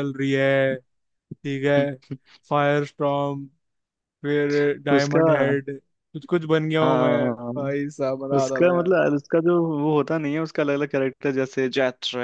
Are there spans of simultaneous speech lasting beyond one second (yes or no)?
no